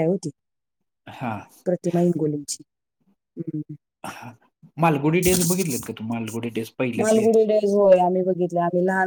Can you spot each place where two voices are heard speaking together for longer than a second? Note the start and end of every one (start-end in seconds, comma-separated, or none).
none